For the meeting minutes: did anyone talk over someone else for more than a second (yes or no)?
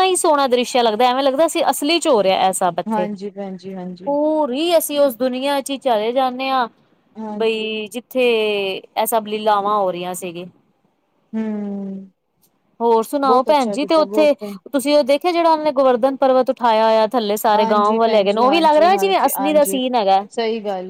yes